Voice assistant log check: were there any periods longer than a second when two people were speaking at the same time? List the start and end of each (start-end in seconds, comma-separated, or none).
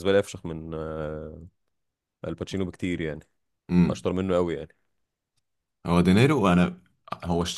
none